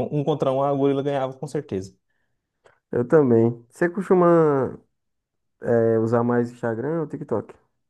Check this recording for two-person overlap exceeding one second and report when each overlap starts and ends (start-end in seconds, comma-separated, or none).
none